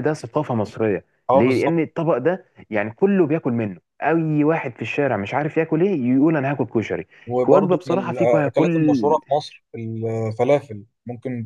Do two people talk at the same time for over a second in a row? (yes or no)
yes